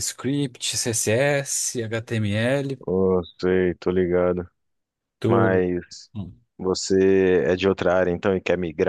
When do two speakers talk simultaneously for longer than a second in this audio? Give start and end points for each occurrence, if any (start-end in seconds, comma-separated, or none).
none